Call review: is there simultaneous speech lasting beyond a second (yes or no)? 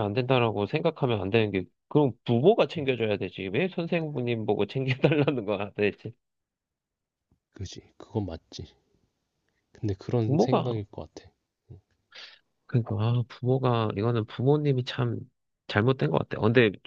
no